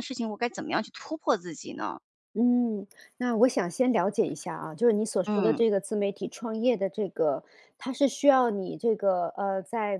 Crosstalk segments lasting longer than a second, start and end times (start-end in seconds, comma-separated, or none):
none